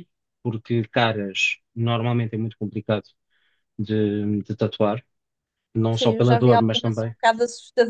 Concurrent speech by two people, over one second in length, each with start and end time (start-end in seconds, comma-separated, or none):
5.9-7.1